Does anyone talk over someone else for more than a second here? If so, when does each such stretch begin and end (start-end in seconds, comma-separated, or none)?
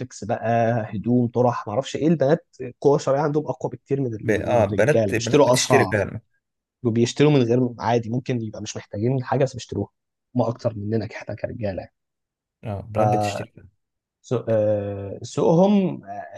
4.2-6.0